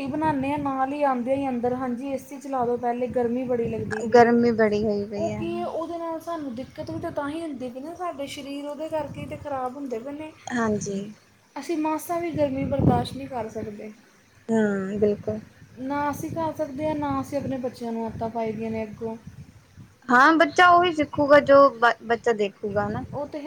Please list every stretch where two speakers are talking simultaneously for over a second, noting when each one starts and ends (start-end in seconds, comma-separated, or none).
none